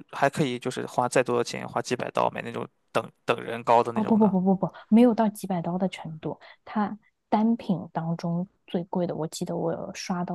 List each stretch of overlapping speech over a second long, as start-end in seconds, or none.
none